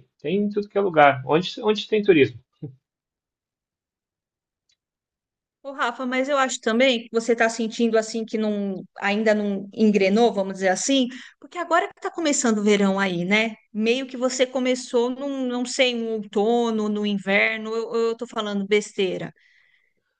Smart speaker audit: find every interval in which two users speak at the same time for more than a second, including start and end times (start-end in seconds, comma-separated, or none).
none